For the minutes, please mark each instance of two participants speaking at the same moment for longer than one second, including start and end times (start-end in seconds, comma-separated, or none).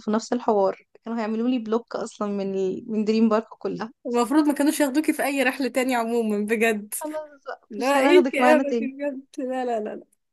7.7-8.9